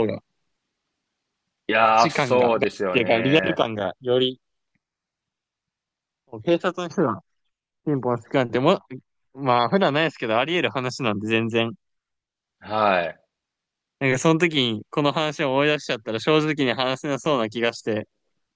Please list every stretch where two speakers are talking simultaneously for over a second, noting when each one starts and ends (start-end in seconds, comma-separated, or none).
1.8-3.6